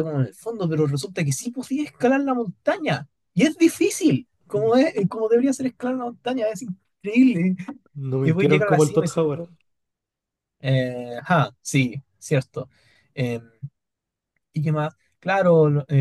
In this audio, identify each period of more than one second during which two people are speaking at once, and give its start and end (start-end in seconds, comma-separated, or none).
8.2-9.4